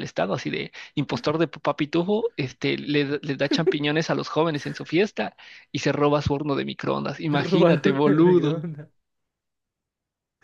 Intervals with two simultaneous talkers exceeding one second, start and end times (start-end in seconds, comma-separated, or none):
7.3-8.7